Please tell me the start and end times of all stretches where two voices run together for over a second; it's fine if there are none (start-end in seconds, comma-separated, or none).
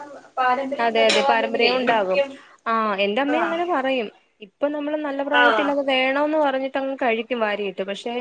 0.9-2.2